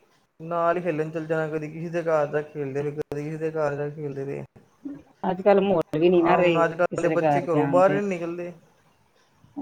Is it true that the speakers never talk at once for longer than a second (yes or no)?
no